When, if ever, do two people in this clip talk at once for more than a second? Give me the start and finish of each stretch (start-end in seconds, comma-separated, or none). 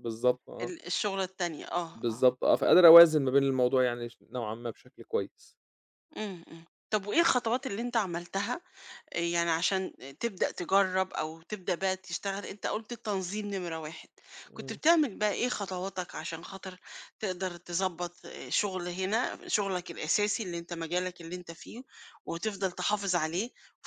none